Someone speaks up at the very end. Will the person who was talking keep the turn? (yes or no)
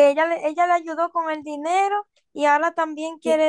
no